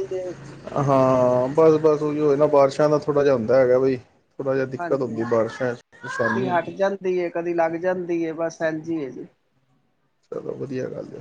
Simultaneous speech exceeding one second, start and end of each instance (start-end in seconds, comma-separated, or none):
none